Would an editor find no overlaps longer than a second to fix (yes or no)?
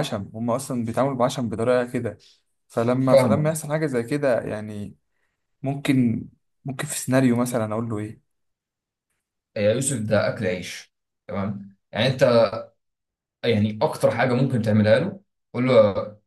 yes